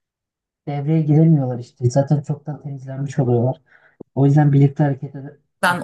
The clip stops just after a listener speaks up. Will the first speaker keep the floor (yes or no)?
no